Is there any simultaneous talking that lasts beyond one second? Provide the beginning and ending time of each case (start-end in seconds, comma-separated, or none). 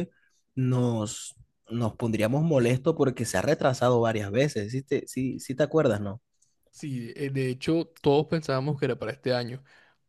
none